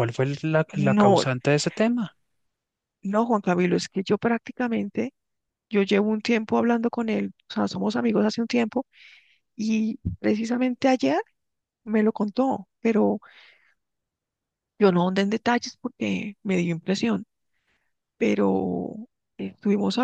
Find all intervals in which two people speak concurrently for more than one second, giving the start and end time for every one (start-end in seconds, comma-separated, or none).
none